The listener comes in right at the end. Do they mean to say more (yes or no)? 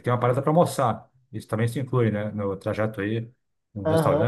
yes